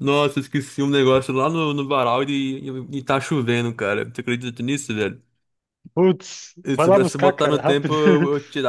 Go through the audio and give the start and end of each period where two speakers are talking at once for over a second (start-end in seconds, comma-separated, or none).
6.6-8.0